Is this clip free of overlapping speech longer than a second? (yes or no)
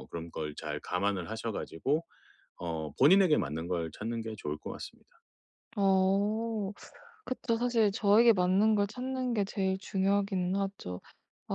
yes